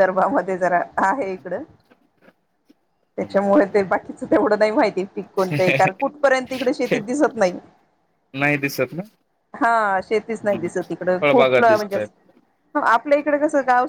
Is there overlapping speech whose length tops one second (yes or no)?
yes